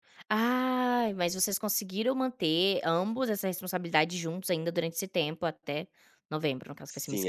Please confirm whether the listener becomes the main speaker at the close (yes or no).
yes